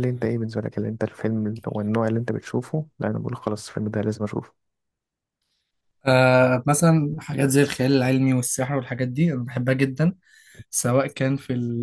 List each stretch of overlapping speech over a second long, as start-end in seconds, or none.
none